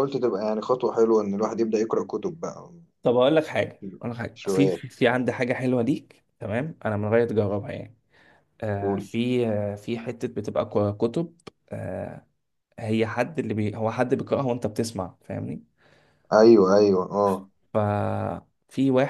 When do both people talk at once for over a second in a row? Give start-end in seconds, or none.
none